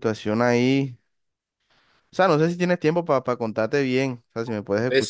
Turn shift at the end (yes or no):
yes